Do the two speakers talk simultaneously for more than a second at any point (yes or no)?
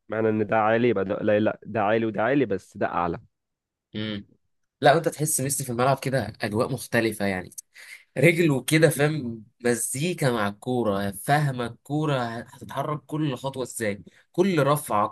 no